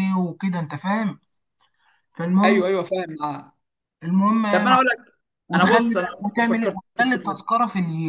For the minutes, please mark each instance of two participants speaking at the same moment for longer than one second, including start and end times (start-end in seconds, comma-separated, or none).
5.5-7.5